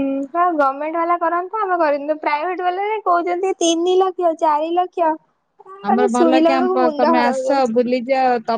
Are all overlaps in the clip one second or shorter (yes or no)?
no